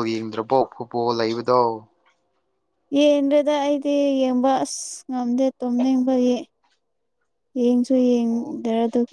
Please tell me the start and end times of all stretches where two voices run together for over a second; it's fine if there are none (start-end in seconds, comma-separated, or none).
none